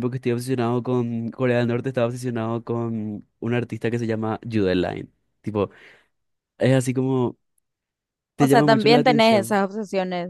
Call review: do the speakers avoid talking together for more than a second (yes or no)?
no